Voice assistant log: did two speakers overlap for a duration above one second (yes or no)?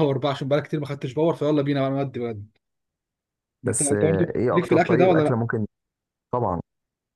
yes